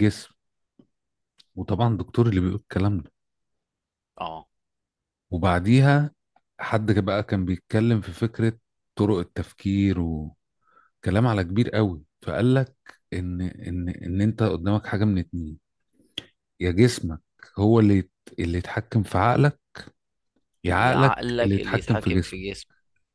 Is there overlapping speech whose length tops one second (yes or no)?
yes